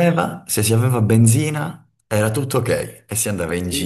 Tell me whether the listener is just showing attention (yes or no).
no